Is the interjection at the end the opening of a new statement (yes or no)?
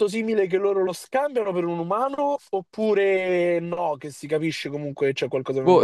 yes